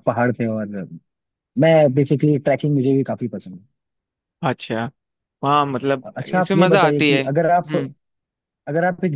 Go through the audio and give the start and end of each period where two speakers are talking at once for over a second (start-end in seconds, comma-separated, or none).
6.0-7.7